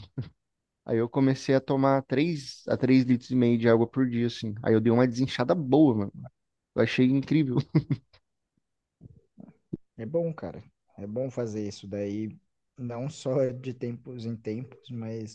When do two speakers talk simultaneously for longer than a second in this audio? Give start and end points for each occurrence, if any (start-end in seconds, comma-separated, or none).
none